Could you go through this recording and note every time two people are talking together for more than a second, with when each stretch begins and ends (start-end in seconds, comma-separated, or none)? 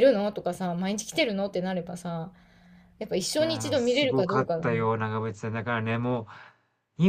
3.4-4.9